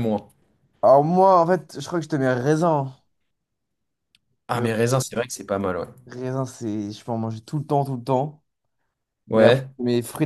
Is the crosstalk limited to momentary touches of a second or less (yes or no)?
yes